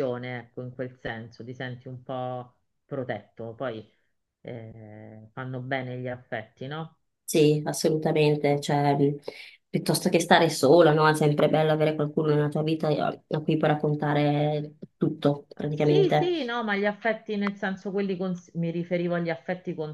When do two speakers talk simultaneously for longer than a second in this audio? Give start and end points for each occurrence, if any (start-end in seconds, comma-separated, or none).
none